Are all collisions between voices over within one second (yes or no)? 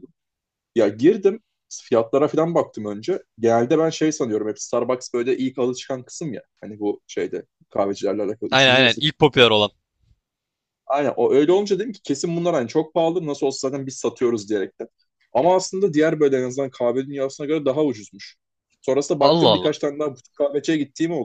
yes